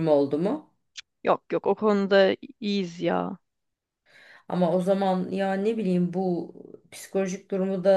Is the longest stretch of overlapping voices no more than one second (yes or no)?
yes